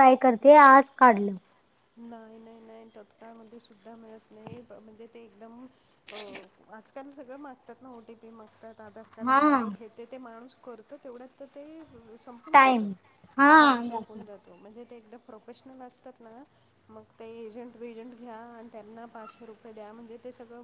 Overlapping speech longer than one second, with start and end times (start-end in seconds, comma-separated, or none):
none